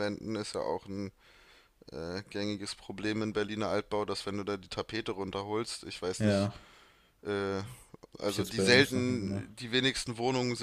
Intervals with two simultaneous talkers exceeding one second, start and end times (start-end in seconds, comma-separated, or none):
8.2-9.5